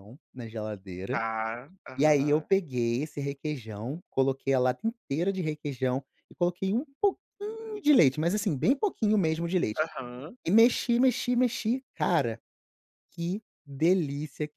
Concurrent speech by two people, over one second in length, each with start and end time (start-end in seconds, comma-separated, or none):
none